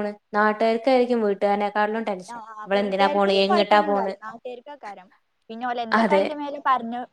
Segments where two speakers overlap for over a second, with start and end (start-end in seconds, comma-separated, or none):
2.3-4.1